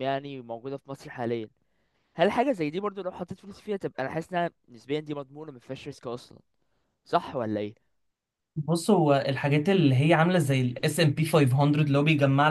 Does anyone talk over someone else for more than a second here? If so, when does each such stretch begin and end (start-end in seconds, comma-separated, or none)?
none